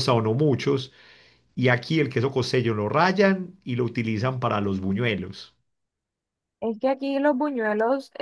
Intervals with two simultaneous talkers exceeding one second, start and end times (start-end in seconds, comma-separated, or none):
none